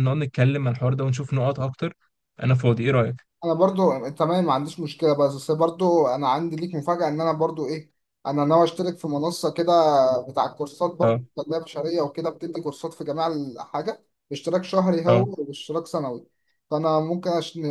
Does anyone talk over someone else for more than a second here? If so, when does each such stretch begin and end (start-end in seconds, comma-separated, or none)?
none